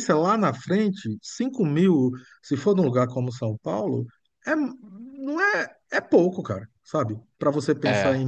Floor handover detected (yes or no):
no